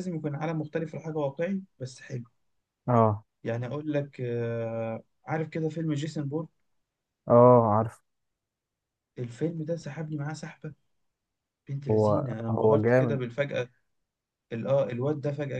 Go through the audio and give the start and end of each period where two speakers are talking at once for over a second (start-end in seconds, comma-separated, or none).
11.9-13.2